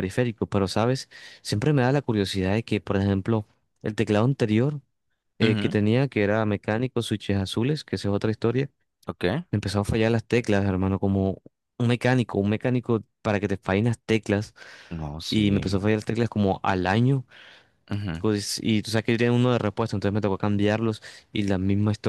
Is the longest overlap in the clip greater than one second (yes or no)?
no